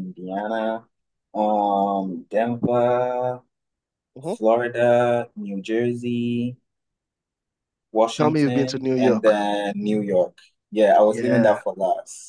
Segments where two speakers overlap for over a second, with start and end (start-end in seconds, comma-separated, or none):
8.2-9.4